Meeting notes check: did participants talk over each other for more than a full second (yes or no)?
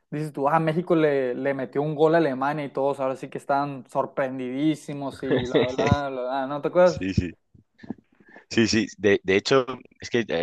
no